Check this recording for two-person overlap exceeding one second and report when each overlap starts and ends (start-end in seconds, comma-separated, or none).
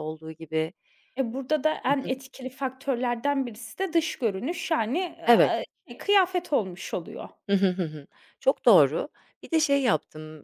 none